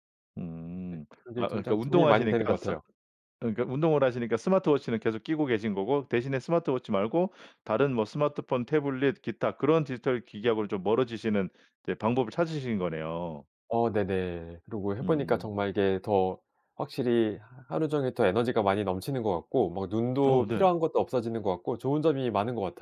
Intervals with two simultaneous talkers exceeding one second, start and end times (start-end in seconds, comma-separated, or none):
0.9-2.7